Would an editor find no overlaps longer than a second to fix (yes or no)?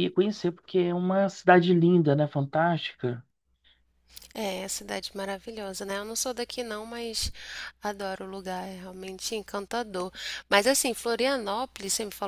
yes